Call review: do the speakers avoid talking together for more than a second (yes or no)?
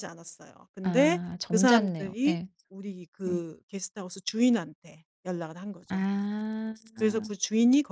no